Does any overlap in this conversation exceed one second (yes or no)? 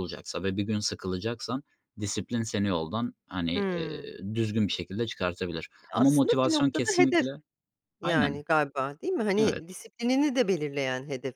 yes